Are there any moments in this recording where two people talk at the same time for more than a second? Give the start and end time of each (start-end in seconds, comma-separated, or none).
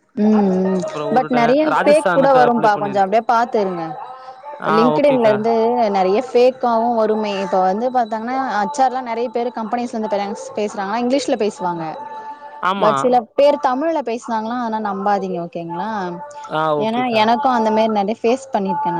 0.9-3.1